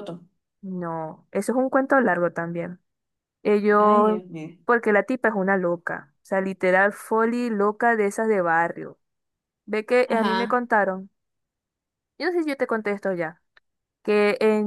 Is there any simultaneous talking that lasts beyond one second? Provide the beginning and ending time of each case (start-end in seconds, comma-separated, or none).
none